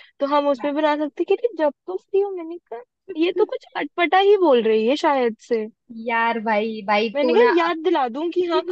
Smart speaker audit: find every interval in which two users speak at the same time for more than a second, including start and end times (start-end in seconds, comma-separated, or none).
none